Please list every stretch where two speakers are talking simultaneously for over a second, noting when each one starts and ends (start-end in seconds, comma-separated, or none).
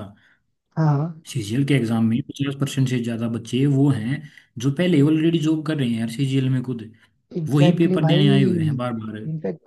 7.5-8.8